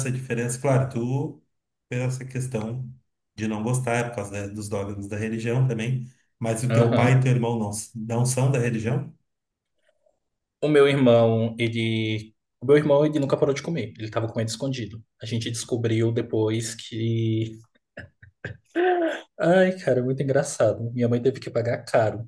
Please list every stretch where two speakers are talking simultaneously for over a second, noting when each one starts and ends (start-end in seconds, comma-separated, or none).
none